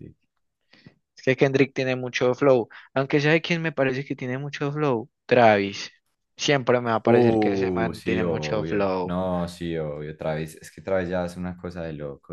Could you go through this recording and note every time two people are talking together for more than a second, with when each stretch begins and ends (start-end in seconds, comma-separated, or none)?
7.0-9.2